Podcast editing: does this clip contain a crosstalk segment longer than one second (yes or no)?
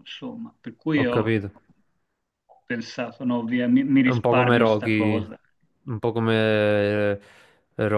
yes